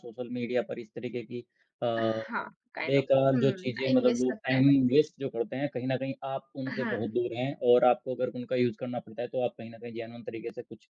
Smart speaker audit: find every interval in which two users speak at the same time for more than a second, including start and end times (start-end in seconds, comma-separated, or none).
2.8-4.6